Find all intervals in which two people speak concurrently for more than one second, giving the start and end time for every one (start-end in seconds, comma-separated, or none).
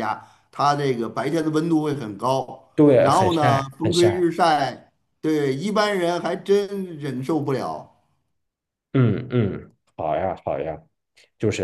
2.7-4.3